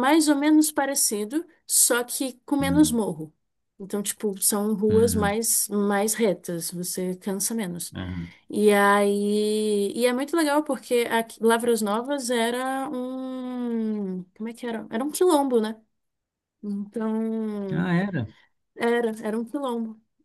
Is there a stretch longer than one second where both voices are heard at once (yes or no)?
no